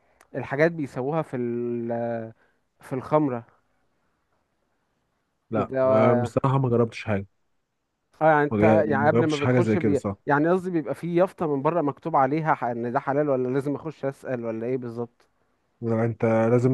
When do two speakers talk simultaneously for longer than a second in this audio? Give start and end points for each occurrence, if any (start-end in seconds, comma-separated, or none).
8.5-10.2